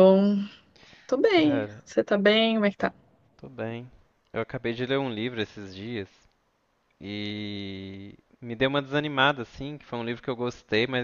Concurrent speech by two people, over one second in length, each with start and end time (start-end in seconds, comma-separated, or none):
none